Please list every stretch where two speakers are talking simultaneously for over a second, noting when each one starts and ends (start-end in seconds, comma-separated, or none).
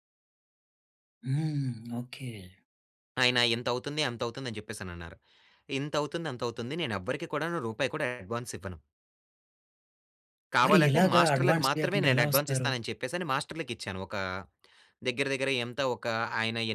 10.7-12.7